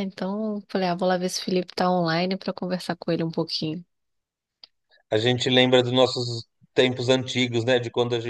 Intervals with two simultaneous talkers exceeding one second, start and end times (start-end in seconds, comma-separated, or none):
none